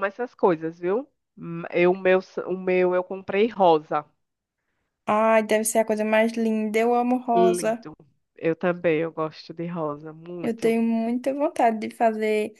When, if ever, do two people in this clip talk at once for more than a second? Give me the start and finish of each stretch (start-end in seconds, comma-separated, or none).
none